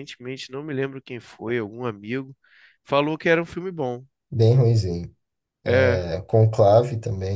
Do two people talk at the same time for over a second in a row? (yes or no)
no